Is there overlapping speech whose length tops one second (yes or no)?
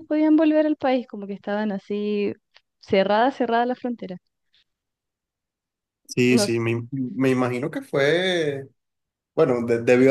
no